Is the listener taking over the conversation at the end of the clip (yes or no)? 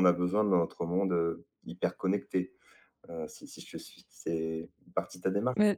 yes